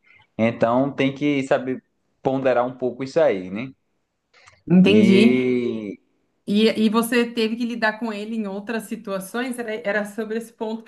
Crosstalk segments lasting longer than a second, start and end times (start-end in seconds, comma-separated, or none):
none